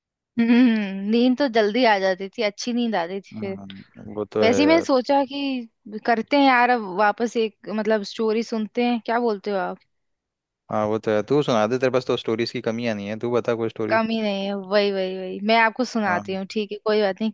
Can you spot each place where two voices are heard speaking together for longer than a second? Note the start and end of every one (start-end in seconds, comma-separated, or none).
none